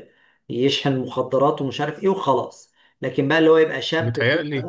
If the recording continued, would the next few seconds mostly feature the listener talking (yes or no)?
no